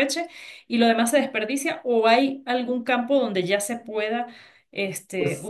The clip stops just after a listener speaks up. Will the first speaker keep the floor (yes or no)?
yes